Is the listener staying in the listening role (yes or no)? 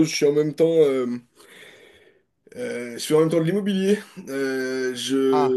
yes